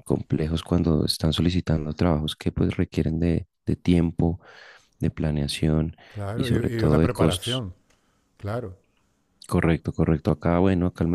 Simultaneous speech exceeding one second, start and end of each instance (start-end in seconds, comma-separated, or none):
6.3-7.6